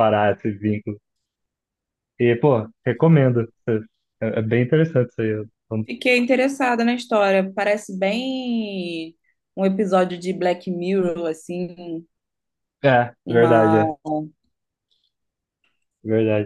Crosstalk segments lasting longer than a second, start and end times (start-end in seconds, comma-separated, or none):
none